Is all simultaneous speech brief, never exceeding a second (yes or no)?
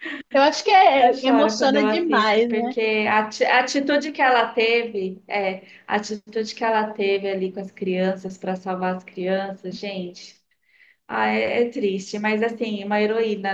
no